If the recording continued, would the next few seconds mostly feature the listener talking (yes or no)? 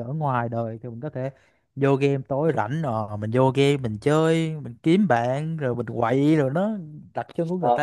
yes